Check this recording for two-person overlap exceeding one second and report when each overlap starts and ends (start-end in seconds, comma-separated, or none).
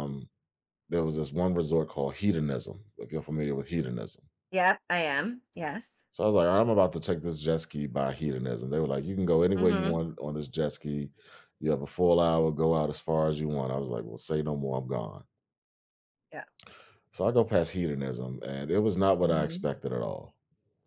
none